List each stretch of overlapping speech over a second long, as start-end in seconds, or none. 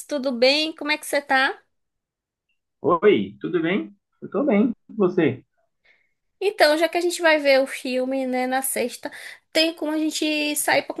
none